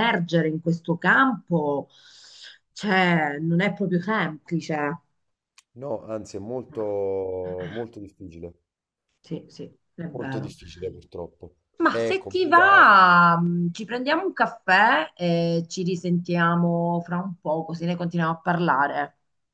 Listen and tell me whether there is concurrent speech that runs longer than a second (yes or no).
yes